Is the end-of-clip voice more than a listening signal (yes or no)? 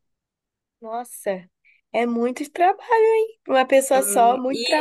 yes